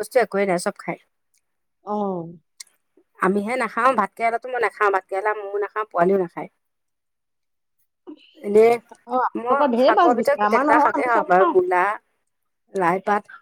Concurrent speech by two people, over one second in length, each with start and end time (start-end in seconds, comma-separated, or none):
9.4-11.5